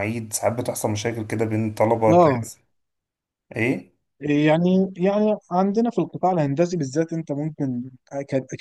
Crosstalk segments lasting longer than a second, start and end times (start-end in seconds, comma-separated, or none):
none